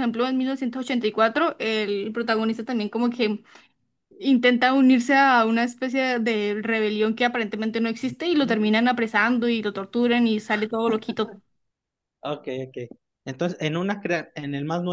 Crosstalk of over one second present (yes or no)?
no